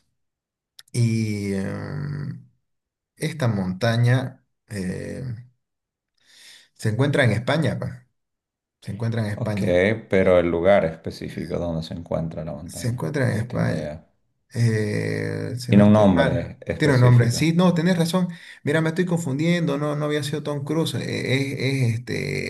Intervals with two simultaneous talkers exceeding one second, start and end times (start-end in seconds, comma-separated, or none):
12.6-14.0, 15.7-17.5